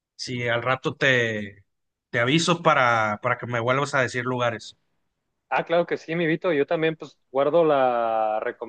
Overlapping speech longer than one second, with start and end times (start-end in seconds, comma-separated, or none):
none